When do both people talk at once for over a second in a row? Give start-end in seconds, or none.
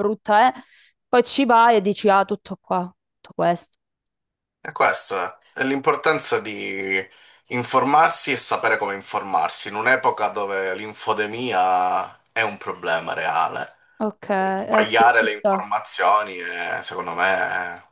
14.4-15.6